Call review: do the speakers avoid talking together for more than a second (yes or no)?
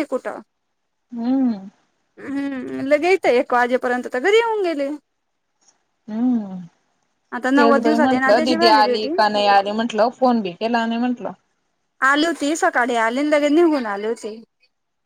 no